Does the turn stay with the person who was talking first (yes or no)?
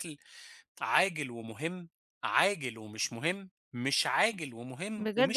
no